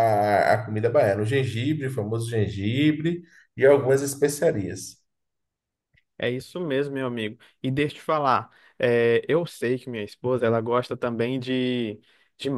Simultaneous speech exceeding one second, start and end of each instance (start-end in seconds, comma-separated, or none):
none